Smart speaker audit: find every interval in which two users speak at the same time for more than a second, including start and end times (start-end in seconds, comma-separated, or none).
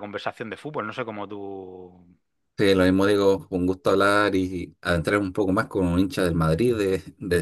none